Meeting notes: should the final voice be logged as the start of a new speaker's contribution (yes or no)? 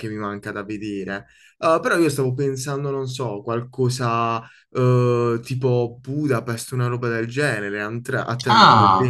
yes